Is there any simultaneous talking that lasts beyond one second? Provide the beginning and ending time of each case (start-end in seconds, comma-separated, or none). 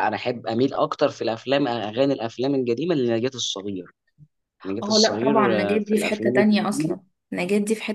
4.8-7.0